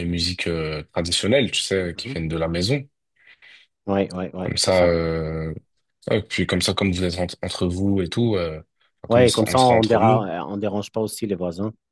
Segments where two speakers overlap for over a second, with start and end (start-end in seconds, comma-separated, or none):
9.1-10.3